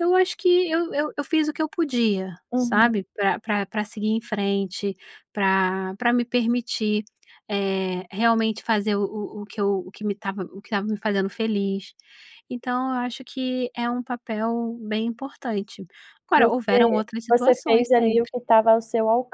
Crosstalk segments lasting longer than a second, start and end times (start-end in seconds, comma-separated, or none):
16.4-18.3